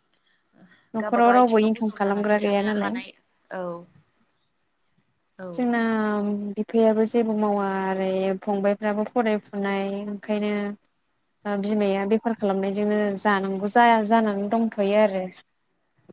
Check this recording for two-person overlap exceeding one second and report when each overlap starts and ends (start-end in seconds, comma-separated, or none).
1.1-2.9